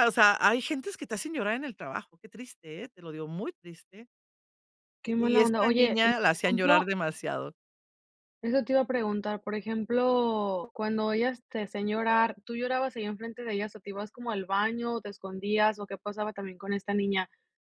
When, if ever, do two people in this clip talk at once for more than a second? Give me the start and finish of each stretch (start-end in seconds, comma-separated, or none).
5.0-6.9